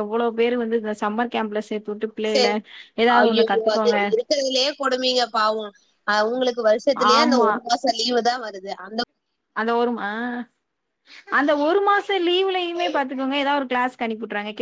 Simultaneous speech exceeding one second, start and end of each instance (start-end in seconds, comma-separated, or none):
none